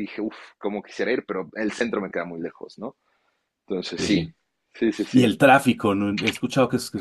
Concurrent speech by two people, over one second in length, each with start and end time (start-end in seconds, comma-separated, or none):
none